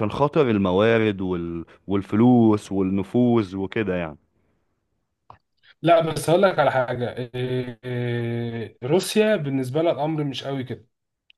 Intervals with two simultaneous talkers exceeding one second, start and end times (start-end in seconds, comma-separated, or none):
none